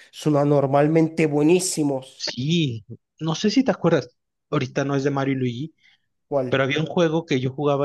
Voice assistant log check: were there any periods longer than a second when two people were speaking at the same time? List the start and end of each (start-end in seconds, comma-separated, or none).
none